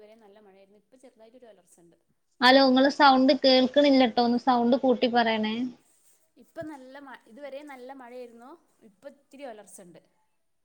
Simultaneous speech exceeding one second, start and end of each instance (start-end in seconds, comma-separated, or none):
none